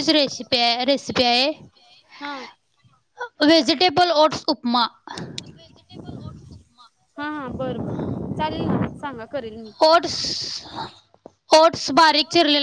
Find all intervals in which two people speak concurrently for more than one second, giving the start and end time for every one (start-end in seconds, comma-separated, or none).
none